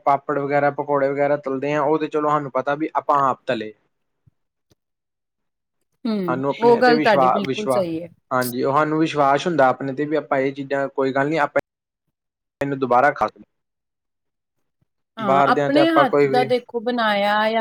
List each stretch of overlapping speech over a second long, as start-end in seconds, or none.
6.3-7.8